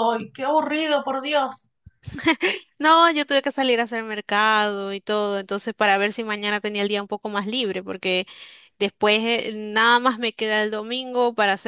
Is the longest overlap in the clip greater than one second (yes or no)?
no